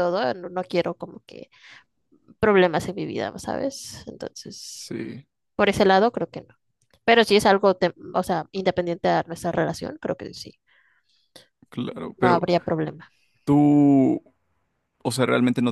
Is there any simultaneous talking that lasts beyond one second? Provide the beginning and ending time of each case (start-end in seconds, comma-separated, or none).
none